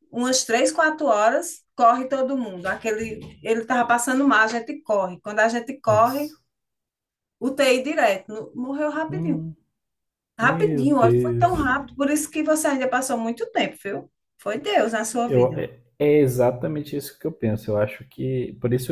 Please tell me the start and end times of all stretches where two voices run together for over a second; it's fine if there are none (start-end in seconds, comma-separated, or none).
10.4-11.7